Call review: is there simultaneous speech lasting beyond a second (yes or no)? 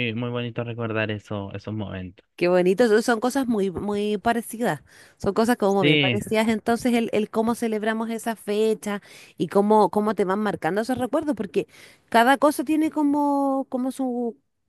no